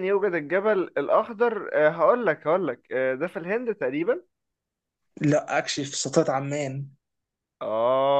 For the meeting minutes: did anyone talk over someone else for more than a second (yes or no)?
no